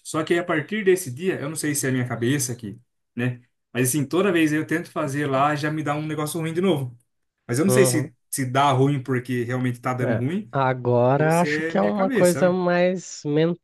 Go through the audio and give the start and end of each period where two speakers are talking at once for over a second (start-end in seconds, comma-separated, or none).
11.2-12.6